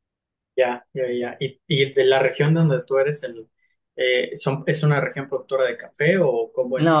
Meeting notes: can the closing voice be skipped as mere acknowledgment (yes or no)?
no